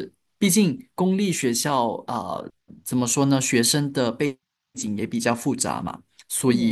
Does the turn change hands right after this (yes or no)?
no